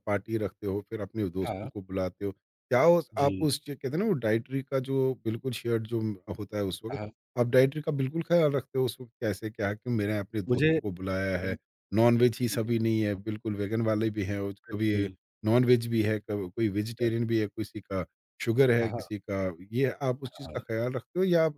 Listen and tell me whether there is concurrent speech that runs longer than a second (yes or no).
no